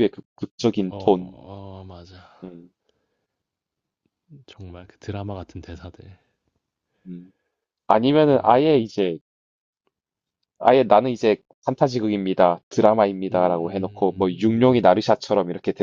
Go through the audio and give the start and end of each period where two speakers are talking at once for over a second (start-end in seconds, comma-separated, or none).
13.3-15.0